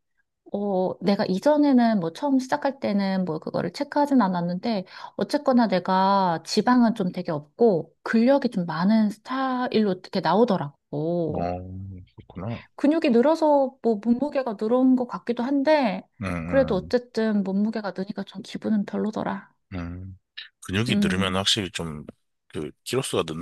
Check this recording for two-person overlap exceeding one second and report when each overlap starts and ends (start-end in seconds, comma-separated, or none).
none